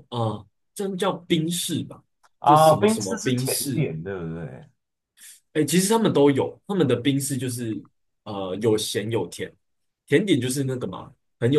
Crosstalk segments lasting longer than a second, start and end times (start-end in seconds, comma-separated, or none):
2.4-3.9